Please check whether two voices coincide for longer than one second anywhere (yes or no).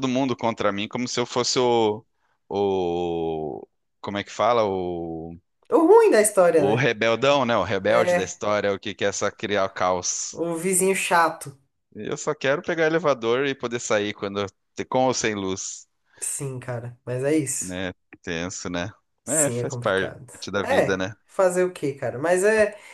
yes